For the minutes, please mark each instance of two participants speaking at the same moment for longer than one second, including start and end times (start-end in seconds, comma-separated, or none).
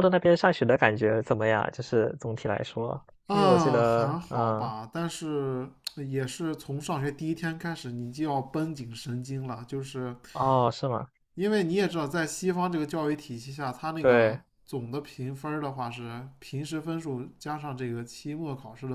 3.2-4.7